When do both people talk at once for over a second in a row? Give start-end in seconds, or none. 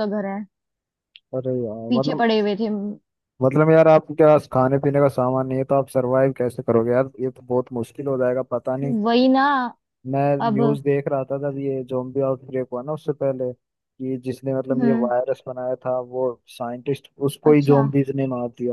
none